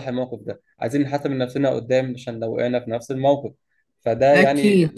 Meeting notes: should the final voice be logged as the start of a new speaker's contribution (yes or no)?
no